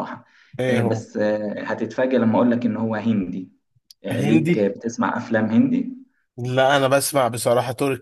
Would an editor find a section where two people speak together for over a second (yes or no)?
no